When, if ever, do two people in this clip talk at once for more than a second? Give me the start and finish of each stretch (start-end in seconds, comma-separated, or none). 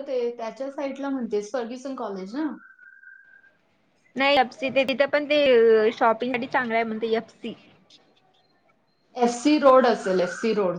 none